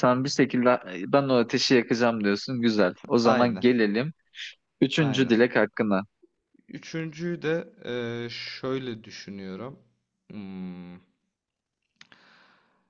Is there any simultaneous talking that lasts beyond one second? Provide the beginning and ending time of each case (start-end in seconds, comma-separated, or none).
none